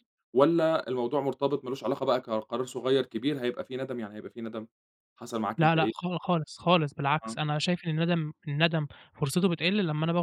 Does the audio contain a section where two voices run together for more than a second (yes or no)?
no